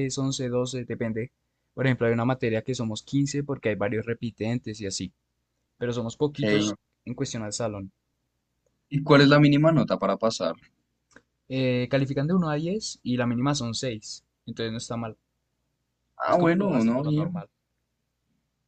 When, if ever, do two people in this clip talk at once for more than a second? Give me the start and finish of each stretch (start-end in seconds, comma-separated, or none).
16.2-17.4